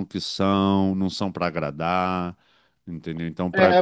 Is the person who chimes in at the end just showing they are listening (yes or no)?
no